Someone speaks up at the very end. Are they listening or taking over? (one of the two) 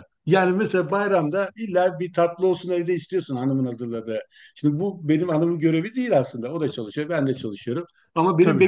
listening